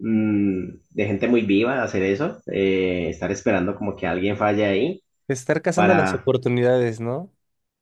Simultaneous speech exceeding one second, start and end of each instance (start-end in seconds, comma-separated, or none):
none